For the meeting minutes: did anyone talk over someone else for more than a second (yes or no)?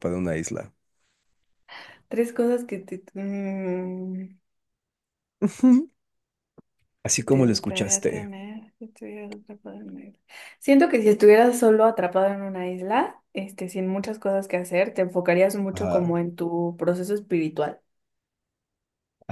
yes